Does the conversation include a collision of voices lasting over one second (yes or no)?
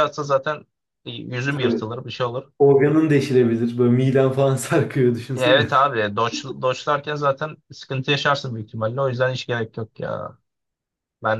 no